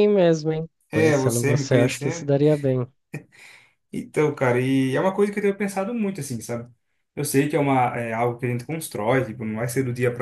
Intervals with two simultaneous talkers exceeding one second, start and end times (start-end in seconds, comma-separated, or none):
0.9-2.3